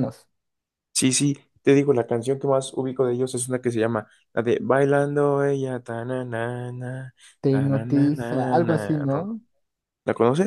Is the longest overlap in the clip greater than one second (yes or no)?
yes